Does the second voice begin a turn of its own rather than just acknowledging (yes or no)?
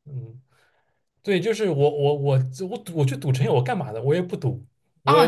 yes